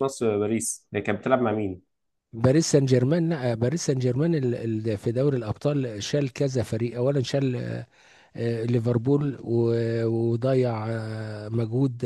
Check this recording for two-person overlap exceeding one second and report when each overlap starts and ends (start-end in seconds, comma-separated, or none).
none